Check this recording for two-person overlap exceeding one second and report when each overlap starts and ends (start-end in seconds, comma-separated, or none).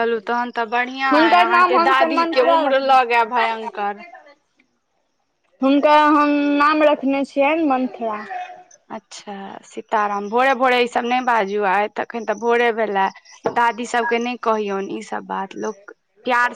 1.1-3.8